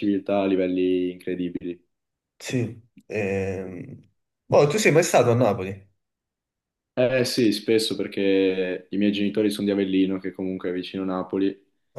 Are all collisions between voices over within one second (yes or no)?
yes